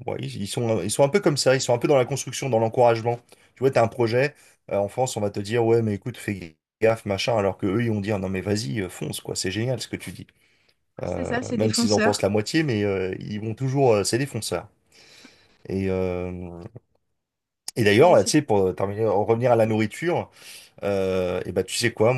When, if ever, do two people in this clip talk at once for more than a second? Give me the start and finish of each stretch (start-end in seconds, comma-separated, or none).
11.0-12.3